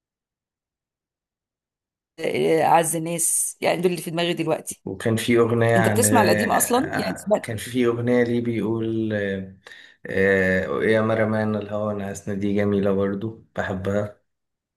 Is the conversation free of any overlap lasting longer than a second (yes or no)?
no